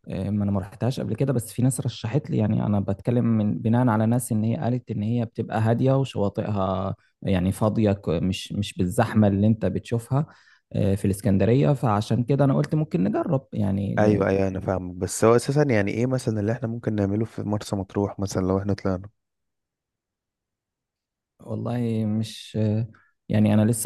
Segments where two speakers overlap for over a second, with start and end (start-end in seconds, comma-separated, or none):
none